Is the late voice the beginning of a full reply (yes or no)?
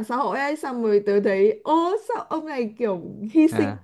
no